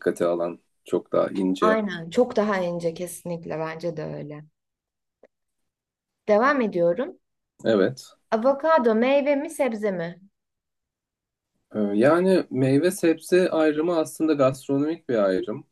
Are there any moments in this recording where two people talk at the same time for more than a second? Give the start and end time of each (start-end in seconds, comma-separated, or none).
none